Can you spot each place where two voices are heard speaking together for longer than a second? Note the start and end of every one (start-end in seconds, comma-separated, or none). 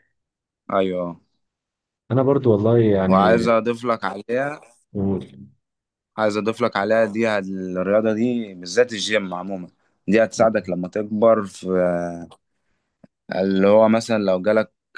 none